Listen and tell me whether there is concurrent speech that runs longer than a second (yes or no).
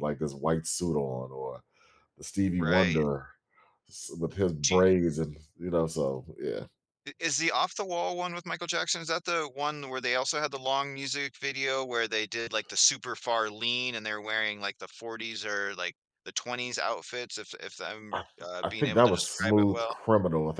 yes